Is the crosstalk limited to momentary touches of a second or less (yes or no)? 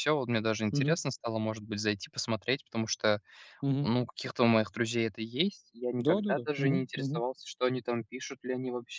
no